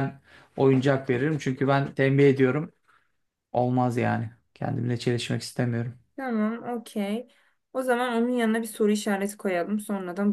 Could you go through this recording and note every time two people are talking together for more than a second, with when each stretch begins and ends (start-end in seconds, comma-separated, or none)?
none